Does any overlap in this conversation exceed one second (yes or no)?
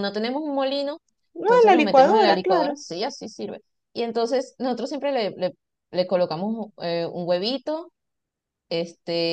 yes